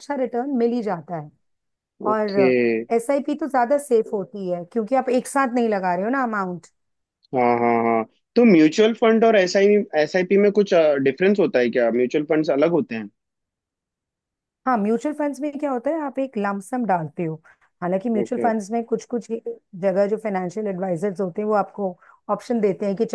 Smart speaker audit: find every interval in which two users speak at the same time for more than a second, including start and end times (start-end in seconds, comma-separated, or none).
none